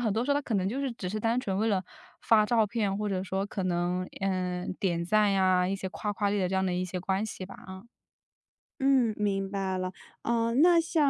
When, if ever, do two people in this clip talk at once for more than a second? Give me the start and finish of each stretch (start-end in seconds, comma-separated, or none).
none